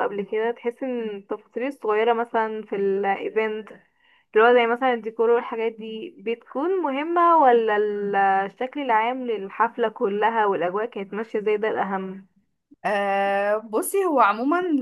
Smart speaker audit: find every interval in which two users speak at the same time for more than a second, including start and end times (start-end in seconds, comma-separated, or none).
none